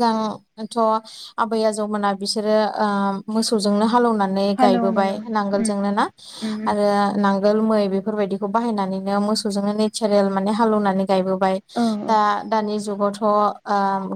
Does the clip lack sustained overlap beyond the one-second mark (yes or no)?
no